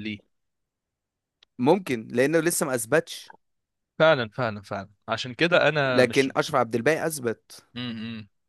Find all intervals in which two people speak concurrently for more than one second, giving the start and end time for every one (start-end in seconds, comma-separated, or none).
none